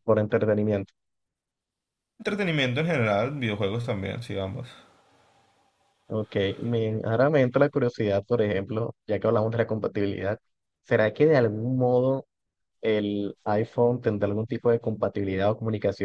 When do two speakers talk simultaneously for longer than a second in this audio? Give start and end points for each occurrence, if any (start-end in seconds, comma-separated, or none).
none